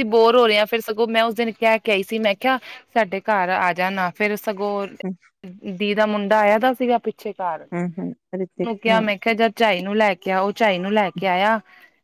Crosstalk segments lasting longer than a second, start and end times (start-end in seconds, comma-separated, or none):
none